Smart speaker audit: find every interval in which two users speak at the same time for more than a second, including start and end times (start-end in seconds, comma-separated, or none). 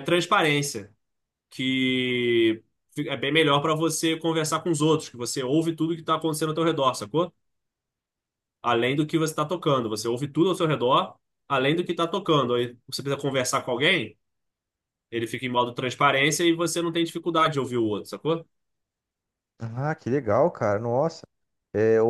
none